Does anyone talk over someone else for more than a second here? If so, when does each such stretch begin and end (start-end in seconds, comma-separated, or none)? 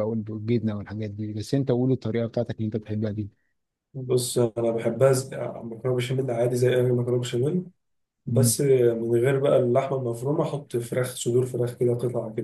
none